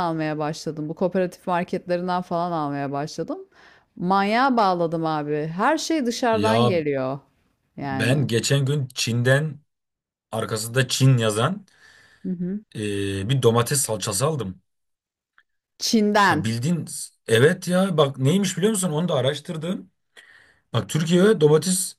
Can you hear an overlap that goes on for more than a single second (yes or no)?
no